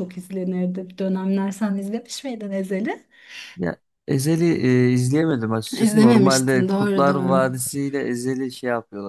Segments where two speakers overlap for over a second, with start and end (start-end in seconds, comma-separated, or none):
5.8-7.4